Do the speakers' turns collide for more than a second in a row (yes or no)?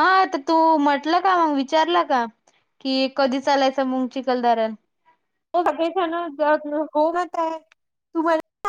no